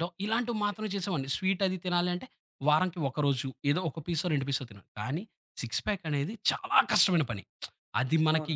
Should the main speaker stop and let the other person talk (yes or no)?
no